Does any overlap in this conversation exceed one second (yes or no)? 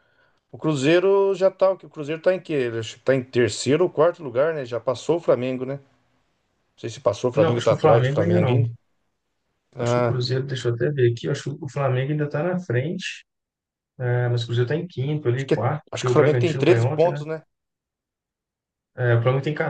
yes